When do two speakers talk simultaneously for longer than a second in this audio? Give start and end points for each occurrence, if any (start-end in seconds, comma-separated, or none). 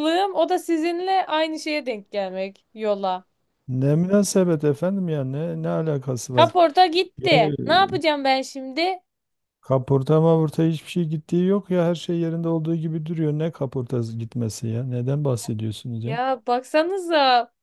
none